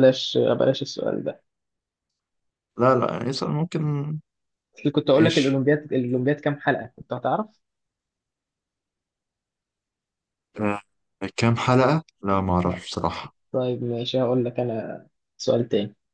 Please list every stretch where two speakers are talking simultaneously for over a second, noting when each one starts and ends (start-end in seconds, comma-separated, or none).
none